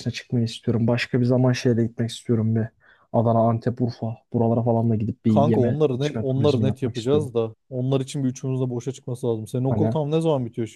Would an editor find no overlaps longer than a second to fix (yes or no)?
no